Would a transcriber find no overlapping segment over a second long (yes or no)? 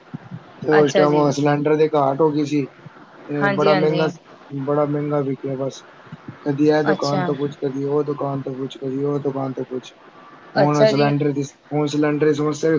yes